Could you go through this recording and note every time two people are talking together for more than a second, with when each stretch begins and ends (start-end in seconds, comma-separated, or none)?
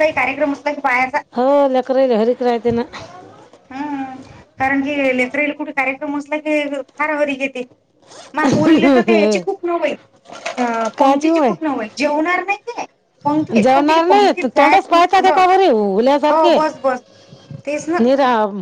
13.6-15.4